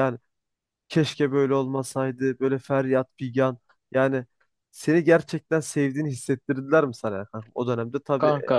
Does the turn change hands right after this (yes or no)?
no